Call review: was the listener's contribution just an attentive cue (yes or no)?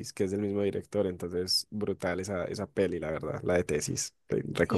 no